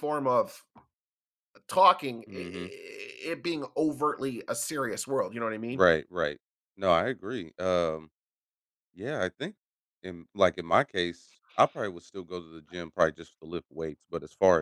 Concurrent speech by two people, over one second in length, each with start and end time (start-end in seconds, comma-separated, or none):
none